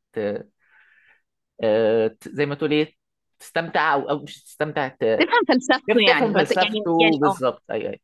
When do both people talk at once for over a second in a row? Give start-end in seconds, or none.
5.9-7.4